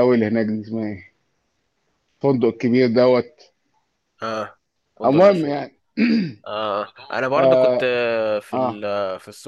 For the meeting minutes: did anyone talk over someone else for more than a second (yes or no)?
no